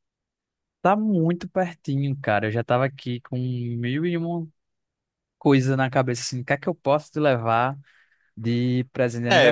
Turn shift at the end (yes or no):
yes